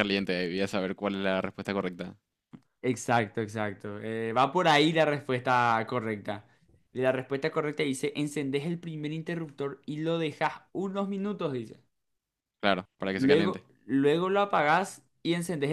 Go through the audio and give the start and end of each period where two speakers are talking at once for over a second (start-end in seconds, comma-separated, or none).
none